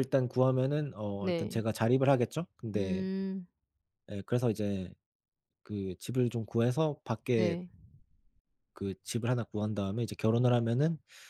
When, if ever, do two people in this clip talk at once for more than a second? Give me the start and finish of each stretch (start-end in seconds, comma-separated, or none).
none